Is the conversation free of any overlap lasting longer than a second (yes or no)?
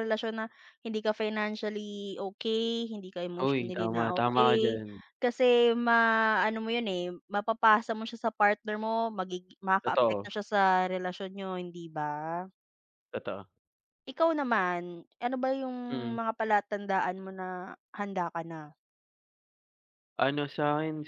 no